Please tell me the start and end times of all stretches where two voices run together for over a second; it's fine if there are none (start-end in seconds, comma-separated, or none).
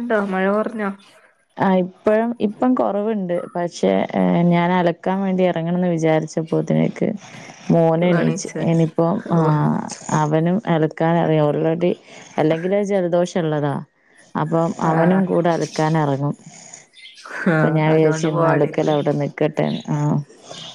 17.5-19.0